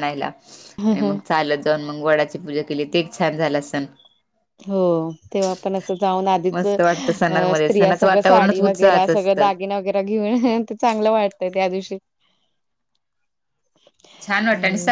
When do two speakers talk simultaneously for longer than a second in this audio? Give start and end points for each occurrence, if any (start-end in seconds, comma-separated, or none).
7.6-9.5